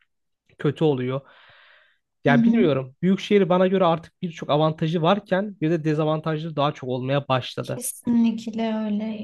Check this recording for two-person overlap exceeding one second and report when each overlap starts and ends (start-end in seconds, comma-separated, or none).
none